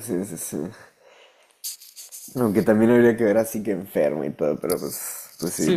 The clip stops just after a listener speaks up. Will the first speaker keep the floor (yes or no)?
no